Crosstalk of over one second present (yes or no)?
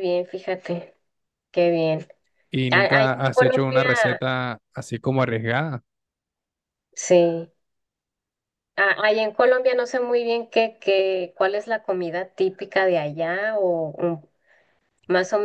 yes